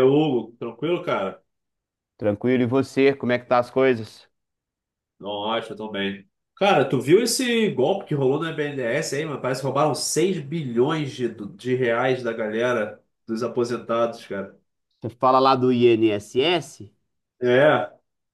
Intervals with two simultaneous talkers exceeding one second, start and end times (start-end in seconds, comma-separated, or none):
none